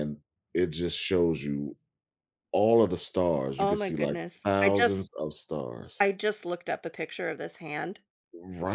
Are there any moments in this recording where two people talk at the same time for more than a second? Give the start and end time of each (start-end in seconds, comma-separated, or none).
3.6-5.1